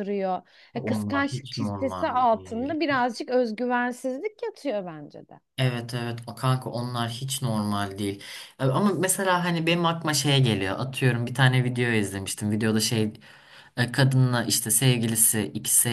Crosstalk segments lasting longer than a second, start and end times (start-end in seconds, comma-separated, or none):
0.7-2.8